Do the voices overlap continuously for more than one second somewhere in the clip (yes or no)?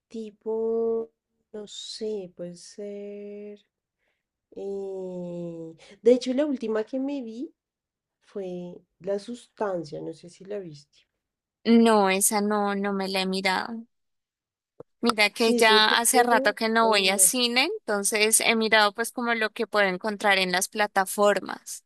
yes